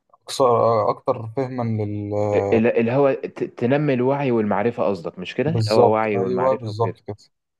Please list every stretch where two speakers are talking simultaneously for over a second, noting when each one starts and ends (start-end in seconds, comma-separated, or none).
5.5-7.0